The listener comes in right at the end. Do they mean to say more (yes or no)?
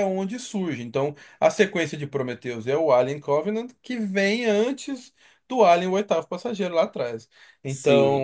yes